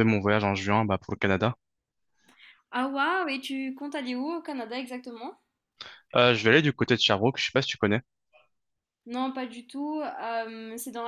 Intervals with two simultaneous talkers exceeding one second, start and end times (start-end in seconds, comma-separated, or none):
none